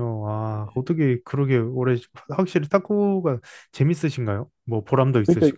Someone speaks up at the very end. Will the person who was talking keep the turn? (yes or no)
no